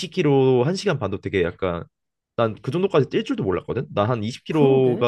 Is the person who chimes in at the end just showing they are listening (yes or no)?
yes